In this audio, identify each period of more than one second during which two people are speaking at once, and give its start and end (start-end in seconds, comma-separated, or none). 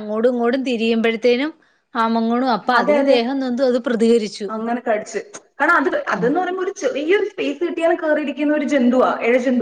none